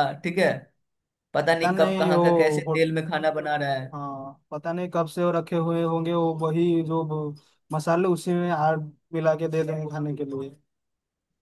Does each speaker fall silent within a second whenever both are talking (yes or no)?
no